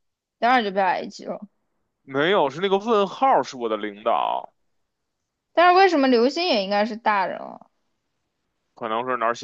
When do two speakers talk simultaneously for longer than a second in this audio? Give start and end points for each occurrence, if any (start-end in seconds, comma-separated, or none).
none